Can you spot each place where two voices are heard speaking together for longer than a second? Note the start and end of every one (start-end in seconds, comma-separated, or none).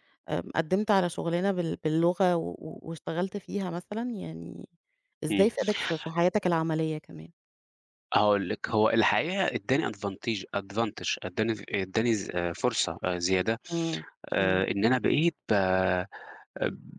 none